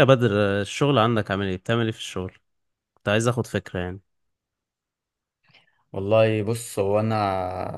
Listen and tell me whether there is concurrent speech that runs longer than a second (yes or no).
no